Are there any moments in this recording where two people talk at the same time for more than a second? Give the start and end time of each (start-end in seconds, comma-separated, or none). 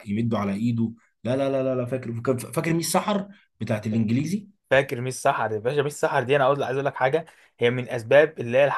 none